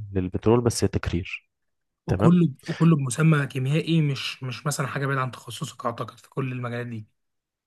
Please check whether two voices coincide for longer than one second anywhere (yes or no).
no